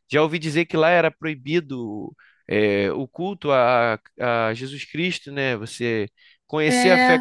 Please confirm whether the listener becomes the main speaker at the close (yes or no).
no